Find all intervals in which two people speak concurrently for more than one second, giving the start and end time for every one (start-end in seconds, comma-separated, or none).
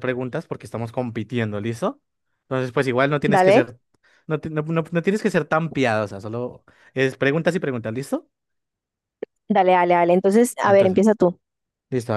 none